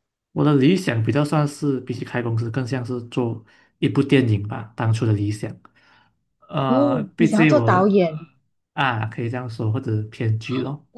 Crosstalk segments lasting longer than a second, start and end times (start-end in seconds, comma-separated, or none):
6.7-8.2